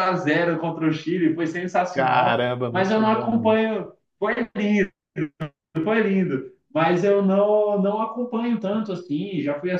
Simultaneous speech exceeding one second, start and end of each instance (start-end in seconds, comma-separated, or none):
1.9-3.5